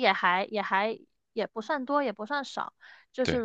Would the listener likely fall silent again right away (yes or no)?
yes